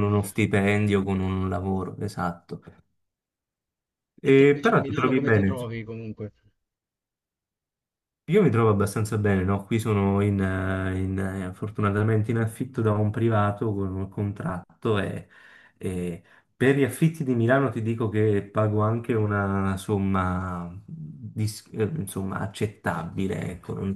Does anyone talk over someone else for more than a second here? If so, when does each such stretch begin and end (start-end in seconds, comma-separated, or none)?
4.3-5.6